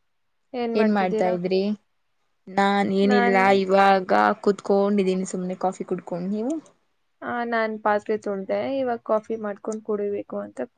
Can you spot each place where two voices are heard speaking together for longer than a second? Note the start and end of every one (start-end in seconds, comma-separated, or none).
none